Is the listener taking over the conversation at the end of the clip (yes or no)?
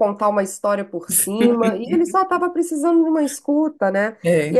no